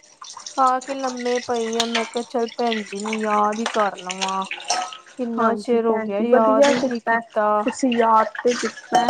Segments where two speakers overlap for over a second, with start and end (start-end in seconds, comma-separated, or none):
5.4-7.2